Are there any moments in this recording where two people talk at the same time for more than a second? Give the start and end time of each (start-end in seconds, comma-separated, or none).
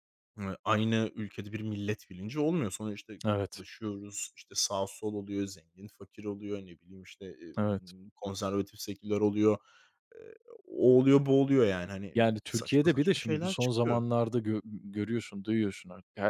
12.1-14.1